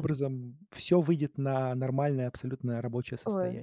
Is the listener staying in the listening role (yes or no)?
no